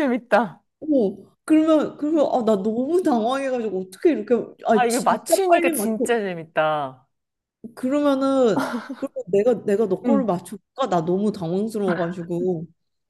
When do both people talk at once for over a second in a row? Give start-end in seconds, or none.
4.7-5.9